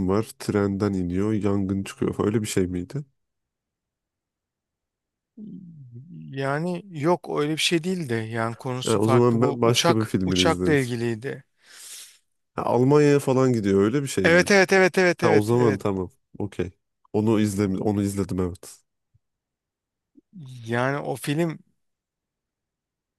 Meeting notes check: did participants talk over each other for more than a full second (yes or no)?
yes